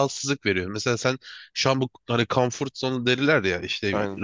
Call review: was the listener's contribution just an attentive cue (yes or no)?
yes